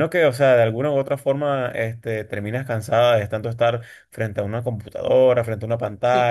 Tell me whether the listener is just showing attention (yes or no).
no